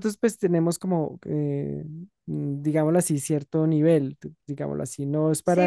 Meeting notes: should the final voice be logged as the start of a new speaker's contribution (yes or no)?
yes